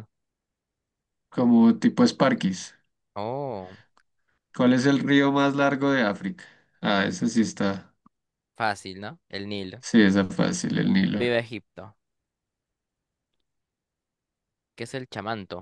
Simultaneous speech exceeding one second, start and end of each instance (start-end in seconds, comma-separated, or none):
none